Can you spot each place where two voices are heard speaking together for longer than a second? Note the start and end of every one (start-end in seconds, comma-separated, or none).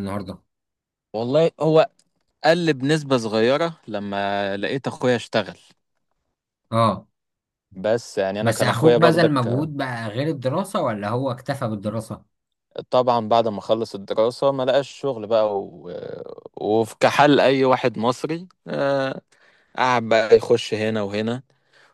8.4-9.7